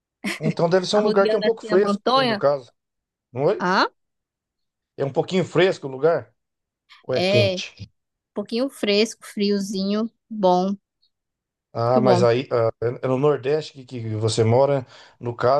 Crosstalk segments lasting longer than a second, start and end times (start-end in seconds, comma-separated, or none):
0.9-2.4